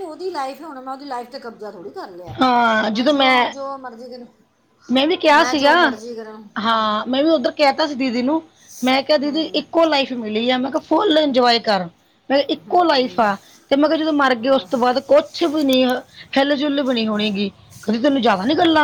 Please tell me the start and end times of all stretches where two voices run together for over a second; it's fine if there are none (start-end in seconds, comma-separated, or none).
none